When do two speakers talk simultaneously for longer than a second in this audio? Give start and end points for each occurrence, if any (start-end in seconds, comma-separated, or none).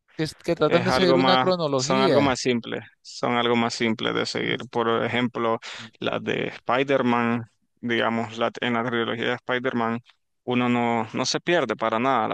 0.6-2.4